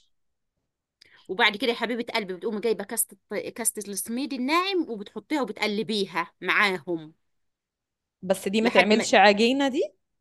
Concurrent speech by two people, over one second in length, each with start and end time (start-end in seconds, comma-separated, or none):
none